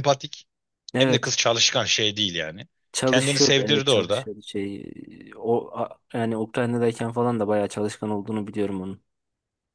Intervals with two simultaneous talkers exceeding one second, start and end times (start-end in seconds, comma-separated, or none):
3.0-4.3